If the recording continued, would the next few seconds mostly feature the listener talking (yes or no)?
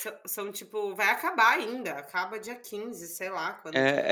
yes